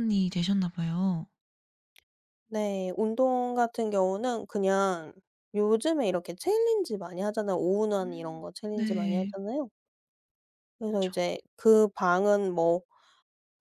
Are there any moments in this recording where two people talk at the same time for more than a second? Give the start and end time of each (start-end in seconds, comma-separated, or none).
8.0-9.3